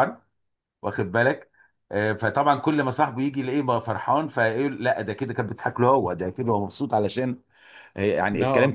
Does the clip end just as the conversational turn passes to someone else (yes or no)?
no